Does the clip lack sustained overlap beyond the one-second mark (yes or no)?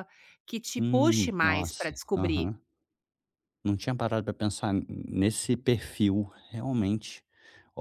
no